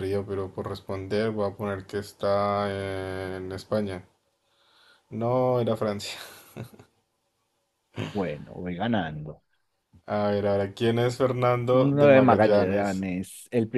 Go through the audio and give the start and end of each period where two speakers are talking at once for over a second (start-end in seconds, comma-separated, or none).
11.7-13.1